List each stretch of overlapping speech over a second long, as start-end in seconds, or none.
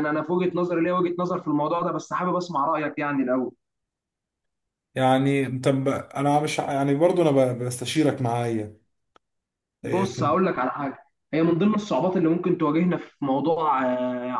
none